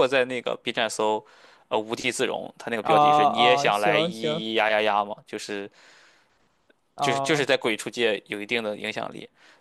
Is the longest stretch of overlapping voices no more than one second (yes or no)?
no